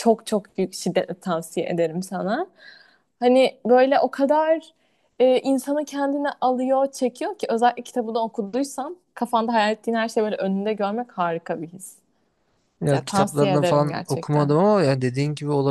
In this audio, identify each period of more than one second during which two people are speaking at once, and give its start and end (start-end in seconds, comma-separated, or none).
12.9-14.5